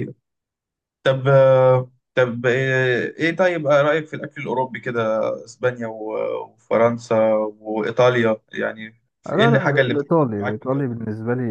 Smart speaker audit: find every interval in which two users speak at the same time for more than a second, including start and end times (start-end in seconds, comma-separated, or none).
9.3-11.0